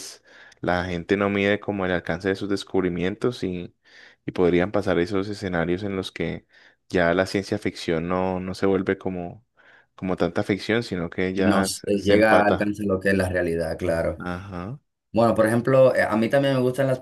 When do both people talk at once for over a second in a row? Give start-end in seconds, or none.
11.3-12.7